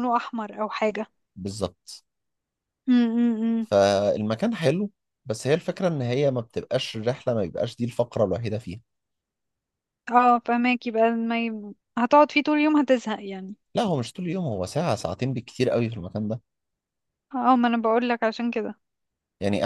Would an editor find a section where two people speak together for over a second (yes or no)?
no